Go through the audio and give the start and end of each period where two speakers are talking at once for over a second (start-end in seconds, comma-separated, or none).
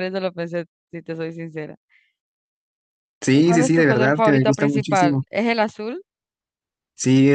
3.3-5.2